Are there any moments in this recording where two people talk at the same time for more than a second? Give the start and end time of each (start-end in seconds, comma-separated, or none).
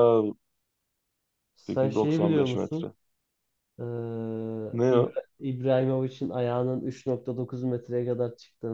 1.7-2.9